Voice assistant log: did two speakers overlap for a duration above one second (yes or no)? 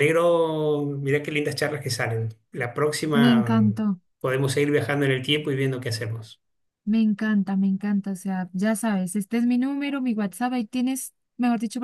no